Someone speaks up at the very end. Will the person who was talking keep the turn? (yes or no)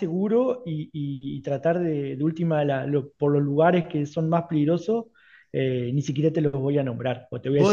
no